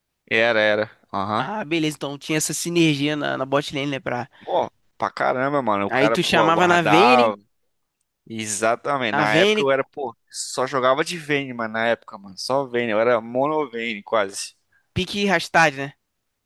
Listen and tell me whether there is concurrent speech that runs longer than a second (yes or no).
yes